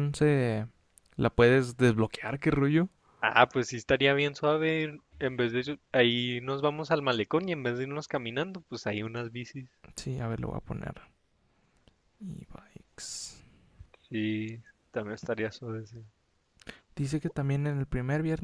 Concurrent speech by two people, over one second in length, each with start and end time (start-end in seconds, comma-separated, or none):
none